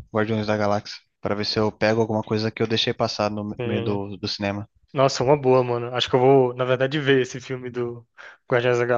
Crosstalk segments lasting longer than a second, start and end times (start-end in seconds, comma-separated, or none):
none